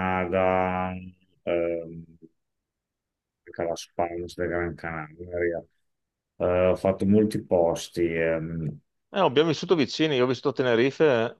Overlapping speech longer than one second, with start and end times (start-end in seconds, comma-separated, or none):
none